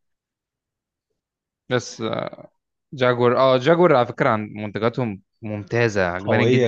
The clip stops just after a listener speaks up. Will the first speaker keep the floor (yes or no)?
no